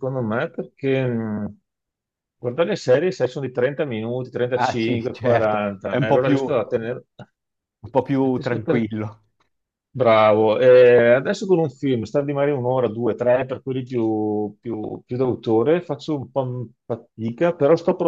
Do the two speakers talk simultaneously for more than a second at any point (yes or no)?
yes